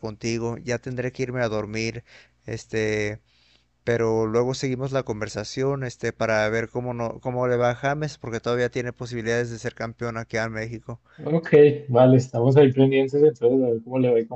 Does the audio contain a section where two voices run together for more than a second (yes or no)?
no